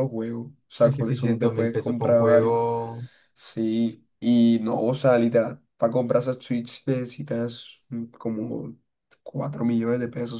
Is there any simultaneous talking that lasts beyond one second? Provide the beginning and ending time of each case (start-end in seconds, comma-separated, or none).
0.8-2.6